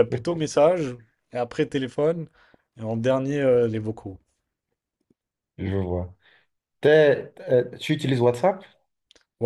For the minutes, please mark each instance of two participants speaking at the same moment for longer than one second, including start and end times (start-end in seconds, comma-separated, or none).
none